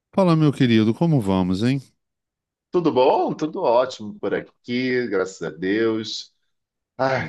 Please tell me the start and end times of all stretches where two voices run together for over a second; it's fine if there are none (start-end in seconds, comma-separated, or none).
none